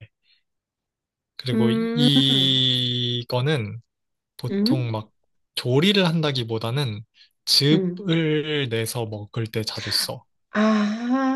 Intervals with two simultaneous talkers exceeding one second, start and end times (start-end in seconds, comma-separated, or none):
none